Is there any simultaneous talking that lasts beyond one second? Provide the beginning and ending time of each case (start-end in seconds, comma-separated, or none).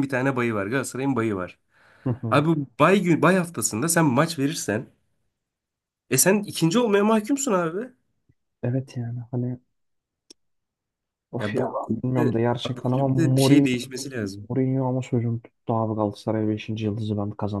11.4-13.7